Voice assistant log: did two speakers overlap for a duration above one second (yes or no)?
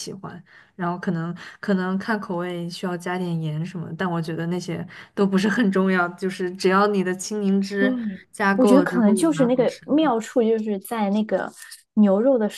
yes